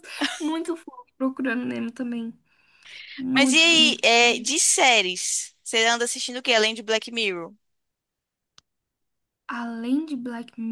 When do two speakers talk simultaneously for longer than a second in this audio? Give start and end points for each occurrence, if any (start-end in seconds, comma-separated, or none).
3.3-4.5